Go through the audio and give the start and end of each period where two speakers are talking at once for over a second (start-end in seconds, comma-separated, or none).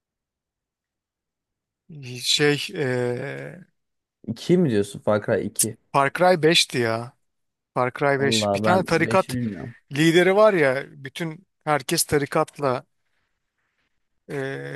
8.2-9.3